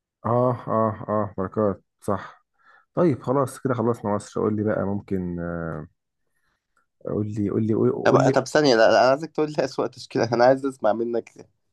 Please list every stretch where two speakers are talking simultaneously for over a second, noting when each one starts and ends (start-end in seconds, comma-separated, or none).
none